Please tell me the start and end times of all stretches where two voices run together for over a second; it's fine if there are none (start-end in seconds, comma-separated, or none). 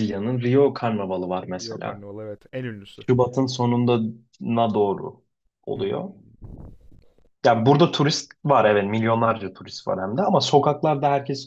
none